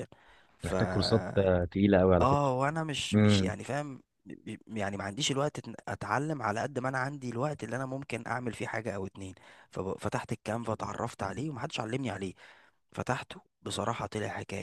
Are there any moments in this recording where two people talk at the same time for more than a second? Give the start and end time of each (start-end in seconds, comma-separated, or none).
none